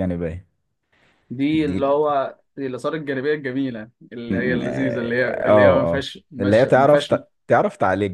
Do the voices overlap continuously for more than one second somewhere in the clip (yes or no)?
yes